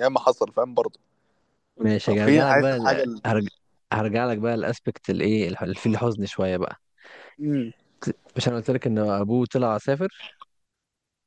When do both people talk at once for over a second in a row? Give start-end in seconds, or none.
2.0-3.2